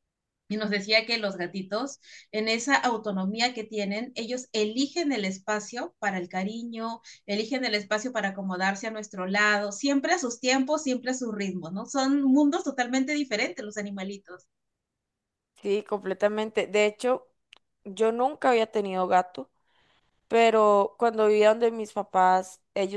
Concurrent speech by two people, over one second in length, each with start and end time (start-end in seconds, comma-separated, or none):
none